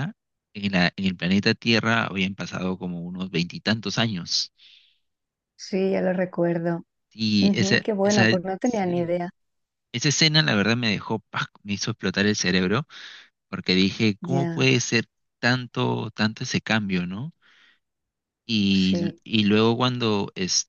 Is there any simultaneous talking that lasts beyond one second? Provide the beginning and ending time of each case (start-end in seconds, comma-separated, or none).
7.4-9.1